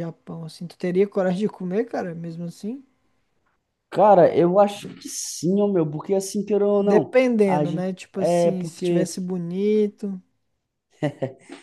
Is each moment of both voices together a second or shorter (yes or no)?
no